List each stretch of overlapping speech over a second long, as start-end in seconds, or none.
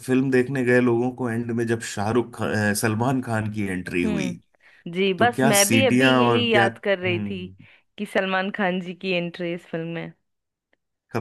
5.2-7.5